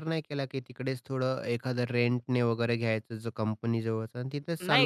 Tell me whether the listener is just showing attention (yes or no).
no